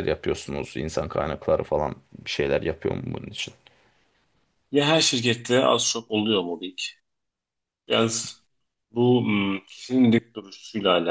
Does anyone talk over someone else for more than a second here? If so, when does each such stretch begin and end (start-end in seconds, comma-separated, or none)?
none